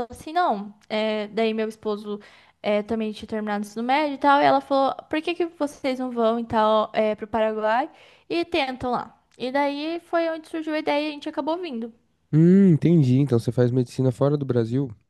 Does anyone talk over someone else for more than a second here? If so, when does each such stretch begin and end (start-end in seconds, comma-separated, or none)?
none